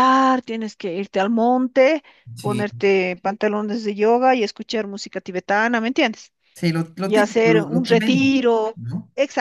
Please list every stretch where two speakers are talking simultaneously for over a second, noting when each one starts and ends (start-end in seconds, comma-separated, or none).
7.0-8.8